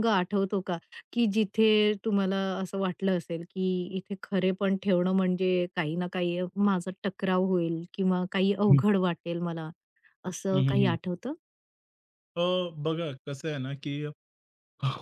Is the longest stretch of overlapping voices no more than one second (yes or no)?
yes